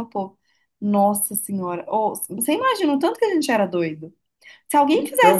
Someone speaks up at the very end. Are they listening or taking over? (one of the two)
listening